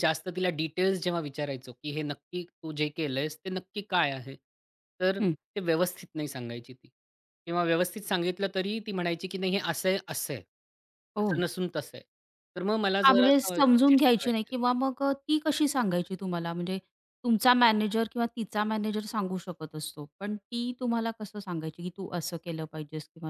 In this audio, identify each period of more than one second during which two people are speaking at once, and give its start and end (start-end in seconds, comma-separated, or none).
13.1-14.5